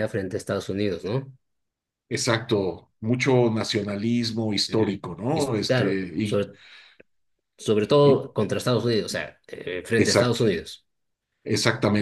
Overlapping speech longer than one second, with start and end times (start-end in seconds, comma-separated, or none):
4.7-6.4